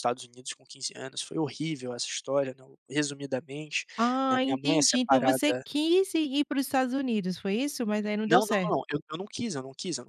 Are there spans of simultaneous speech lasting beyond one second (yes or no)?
yes